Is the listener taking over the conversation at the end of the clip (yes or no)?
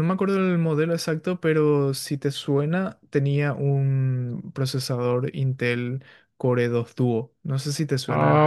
yes